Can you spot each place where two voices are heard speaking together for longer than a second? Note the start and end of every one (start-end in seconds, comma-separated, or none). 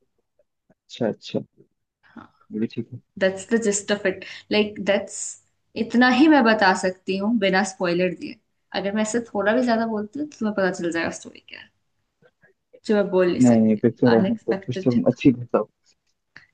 13.4-15.2